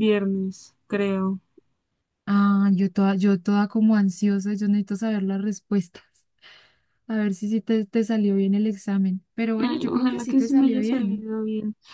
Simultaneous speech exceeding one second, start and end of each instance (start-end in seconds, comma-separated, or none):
9.6-11.2